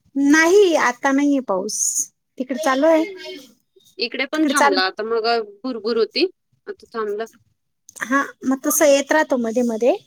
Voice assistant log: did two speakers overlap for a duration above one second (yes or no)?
no